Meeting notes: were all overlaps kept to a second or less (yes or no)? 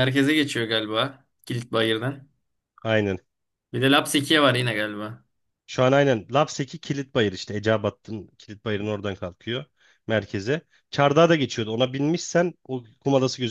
yes